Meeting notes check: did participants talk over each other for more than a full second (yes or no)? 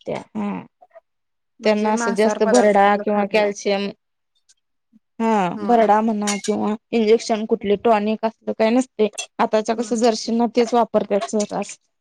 yes